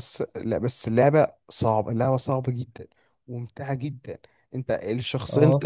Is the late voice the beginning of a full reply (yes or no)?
no